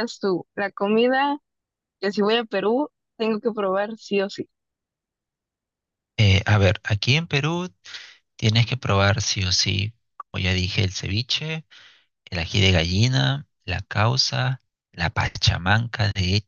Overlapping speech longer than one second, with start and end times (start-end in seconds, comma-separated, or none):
none